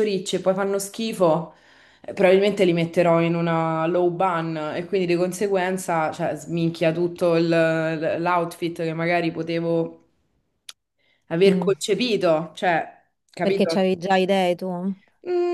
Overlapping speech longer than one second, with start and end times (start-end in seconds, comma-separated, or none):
none